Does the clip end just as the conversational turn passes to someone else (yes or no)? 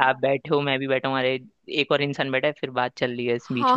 yes